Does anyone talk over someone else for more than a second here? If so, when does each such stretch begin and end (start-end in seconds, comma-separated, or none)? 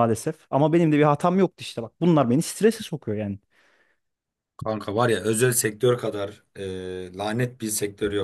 none